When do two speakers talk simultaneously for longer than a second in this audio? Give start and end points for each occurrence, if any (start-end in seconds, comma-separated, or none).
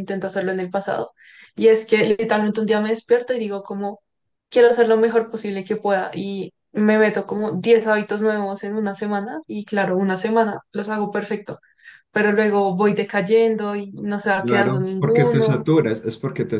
14.4-15.6